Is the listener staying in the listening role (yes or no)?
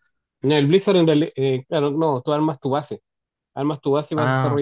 yes